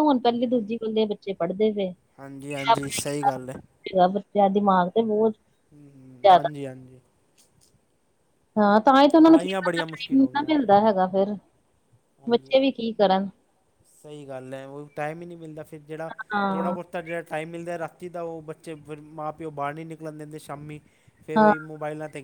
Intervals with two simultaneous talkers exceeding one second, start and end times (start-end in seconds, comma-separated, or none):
9.2-11.0